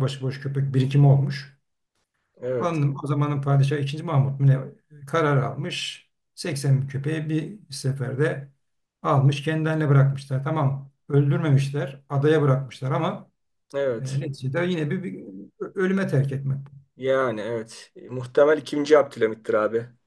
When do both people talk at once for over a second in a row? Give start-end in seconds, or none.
none